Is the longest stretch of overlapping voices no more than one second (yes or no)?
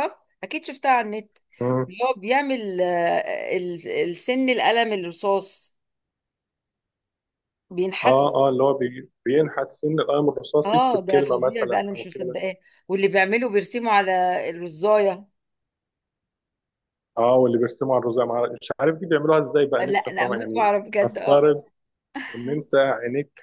no